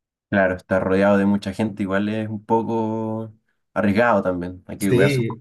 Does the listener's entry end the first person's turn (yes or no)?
yes